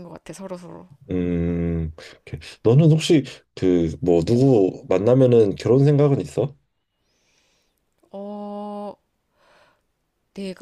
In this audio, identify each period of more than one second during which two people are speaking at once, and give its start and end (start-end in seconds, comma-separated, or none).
none